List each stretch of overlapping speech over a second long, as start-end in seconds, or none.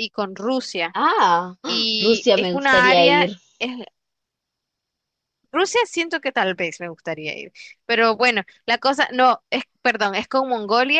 1.6-3.4